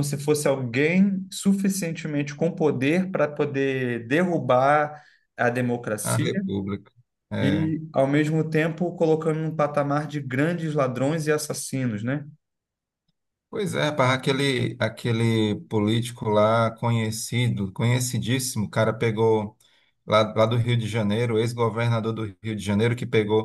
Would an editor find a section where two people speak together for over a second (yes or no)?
no